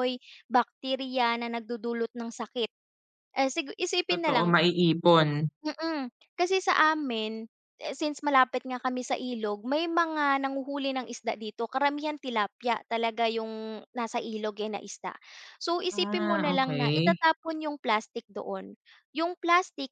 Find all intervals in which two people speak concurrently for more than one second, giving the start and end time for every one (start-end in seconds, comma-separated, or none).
15.9-17.2